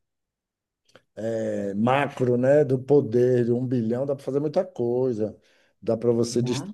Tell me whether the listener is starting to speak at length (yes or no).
no